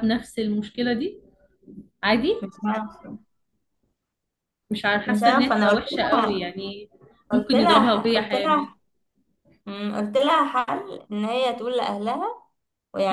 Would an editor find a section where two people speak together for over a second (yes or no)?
yes